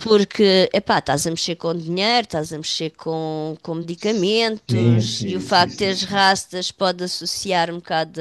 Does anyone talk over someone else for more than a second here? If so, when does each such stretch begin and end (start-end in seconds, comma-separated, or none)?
4.0-6.3